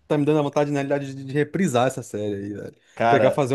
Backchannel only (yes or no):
yes